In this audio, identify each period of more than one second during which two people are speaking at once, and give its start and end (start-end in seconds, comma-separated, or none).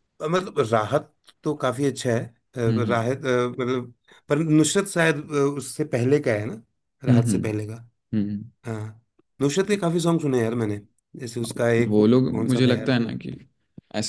11.4-13.1